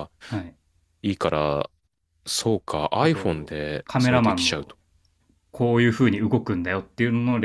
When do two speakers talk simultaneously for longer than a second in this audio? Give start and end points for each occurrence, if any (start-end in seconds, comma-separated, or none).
3.0-4.7